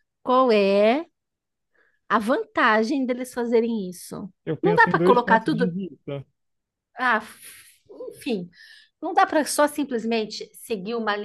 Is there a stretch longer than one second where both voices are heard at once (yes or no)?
yes